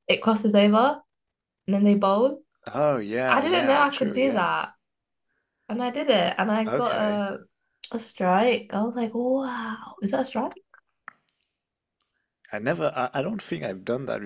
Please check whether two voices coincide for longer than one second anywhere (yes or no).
yes